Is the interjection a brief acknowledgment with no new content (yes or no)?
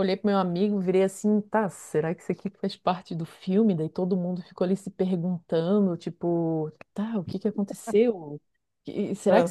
yes